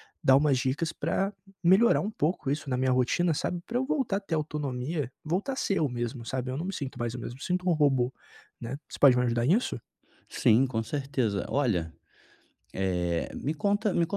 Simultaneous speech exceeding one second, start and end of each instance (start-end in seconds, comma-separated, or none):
none